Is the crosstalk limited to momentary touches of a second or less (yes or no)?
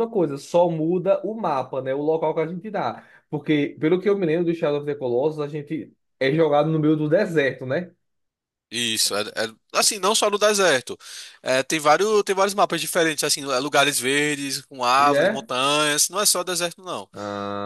yes